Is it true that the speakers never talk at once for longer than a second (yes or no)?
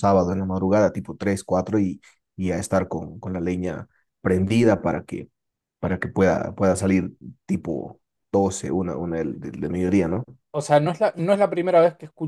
yes